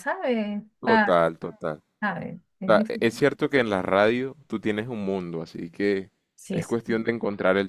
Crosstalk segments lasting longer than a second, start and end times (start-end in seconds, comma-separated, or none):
none